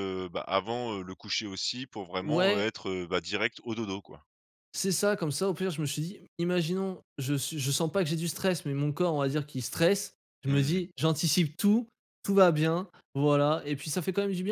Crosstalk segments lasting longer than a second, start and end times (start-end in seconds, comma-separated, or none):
none